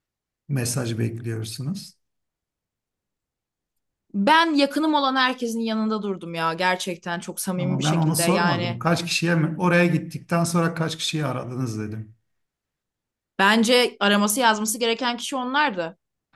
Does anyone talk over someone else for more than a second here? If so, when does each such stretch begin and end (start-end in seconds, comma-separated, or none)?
7.5-8.8